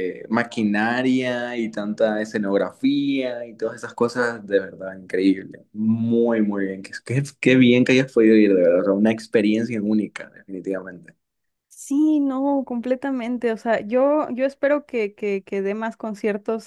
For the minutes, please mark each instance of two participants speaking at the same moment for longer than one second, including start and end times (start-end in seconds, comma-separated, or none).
none